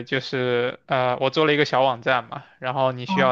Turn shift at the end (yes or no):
no